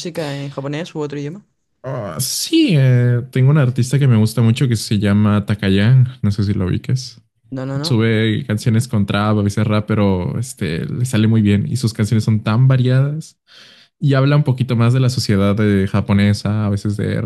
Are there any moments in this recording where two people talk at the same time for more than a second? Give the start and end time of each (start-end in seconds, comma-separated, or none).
none